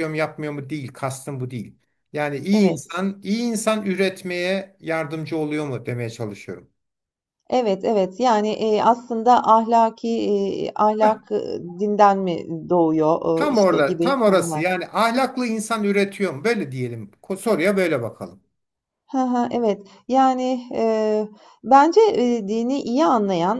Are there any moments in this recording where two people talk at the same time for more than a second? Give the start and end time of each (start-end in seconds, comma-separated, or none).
13.3-14.7